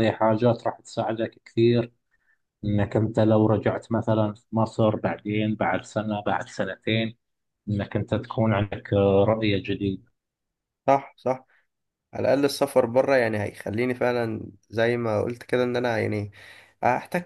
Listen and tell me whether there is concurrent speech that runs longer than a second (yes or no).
no